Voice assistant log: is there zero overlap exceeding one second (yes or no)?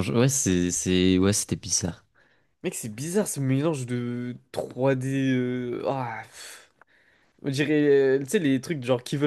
yes